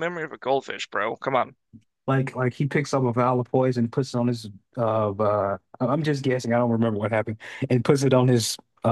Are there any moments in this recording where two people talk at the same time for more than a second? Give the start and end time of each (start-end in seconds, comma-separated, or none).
none